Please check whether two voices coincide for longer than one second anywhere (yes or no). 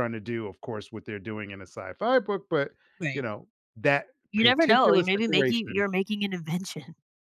yes